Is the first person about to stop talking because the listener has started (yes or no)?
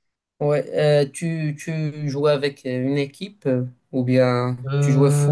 no